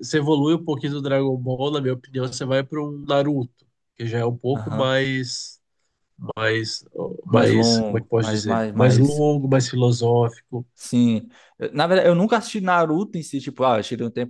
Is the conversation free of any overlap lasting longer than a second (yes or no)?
no